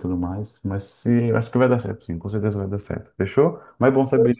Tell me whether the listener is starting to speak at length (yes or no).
no